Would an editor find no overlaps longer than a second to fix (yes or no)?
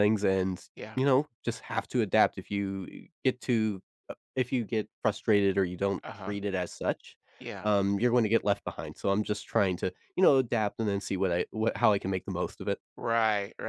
yes